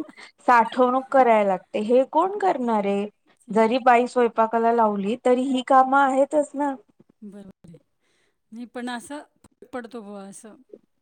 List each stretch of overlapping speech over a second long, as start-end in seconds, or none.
none